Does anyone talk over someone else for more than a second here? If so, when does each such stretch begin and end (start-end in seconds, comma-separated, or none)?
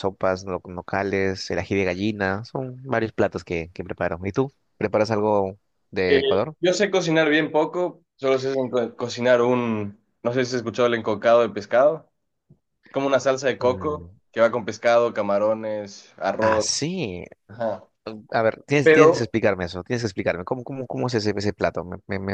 none